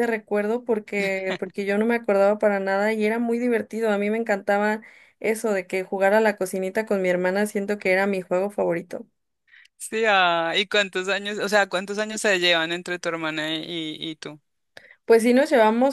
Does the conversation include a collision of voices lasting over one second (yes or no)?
no